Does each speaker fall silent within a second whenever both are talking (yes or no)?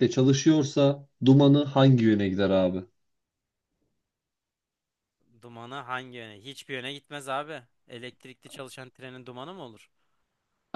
yes